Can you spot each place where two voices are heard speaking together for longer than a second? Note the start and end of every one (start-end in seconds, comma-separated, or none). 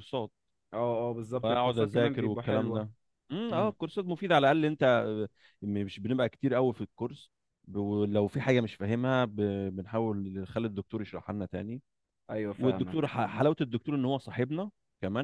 1.4-2.9